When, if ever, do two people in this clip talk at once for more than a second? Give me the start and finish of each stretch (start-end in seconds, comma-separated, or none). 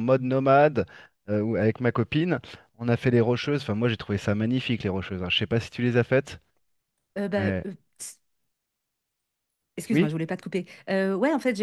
none